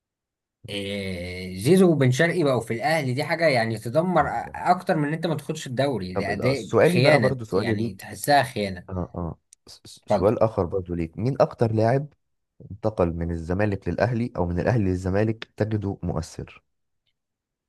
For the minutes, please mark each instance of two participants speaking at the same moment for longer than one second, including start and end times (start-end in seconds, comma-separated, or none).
6.1-8.1